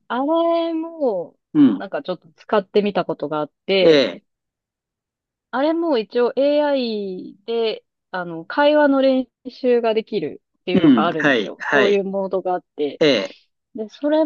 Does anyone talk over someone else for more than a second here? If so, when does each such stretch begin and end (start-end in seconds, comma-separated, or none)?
10.7-12.0